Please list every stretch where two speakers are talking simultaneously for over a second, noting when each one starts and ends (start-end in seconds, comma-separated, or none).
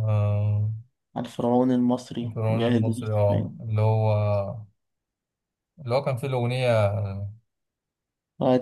2.2-3.6